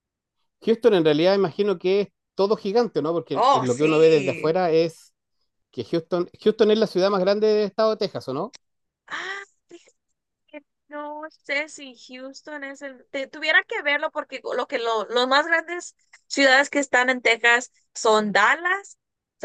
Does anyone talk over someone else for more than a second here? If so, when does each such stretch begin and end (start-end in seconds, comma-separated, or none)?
3.3-4.6